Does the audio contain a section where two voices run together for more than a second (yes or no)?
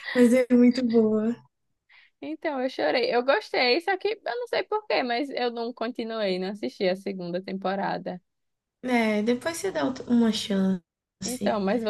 no